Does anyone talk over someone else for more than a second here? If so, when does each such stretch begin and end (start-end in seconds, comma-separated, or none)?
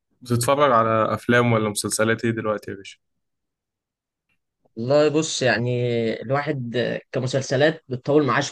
none